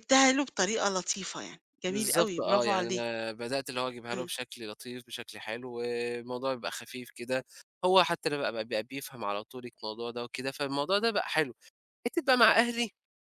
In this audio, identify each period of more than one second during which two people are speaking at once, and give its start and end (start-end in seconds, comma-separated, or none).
1.9-3.1